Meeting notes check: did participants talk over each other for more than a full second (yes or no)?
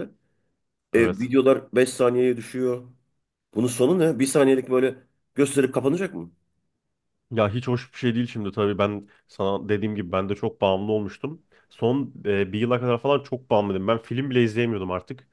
no